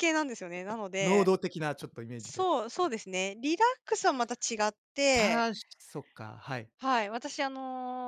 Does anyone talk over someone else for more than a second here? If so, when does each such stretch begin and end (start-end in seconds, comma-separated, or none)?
none